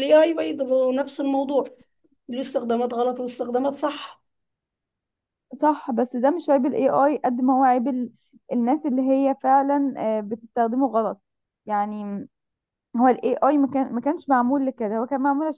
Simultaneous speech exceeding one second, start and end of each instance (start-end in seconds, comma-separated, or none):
none